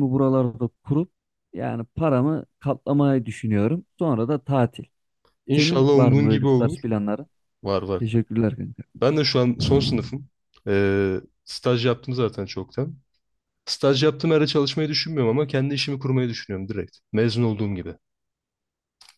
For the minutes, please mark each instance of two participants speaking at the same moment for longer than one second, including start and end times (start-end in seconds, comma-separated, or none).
5.5-6.8